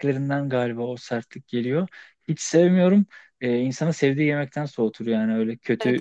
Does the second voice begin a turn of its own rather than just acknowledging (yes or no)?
yes